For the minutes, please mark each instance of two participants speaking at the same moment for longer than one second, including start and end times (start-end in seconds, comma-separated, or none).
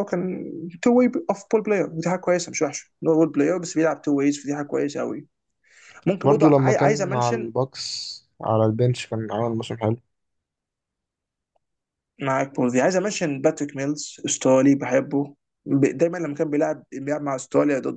6.2-7.5